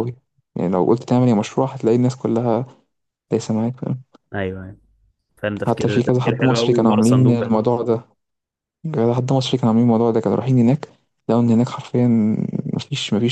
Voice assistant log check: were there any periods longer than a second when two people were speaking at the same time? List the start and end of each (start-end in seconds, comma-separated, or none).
5.7-7.5